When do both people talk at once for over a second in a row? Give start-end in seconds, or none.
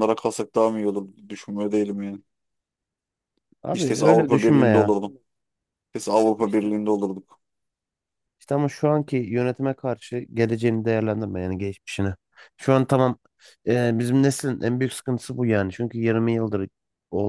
3.7-4.9